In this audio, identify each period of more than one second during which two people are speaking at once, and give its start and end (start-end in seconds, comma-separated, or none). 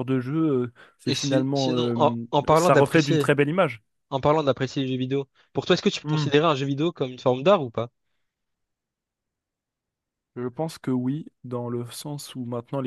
1.1-3.3